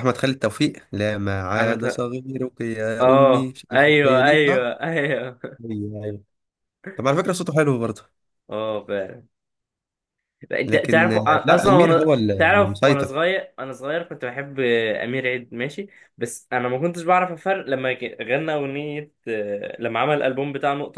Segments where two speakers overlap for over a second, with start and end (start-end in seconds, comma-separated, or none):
3.0-4.7, 10.7-13.1